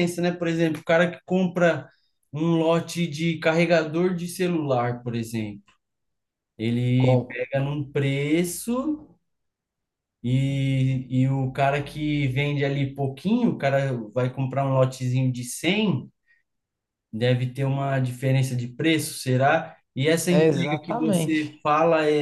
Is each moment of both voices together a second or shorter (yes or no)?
no